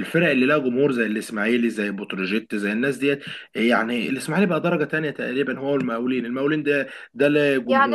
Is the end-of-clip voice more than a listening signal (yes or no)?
yes